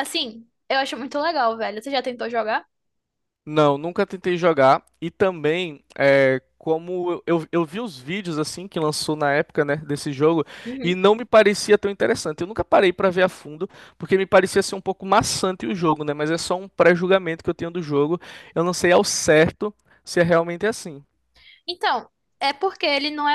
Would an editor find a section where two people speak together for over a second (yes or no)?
no